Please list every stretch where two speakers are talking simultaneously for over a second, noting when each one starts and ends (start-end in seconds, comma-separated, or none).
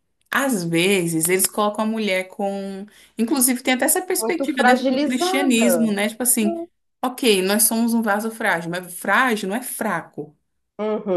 4.2-5.9